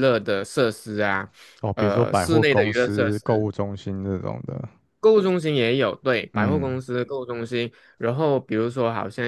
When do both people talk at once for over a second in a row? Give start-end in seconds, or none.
1.8-3.5